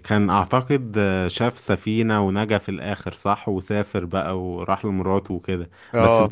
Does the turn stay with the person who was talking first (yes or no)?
yes